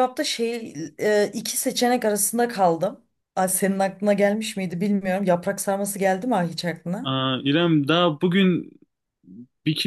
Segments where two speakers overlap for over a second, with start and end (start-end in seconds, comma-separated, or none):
none